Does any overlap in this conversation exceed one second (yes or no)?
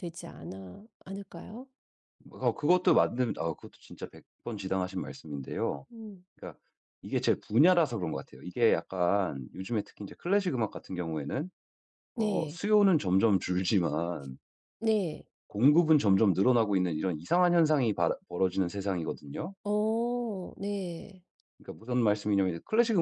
no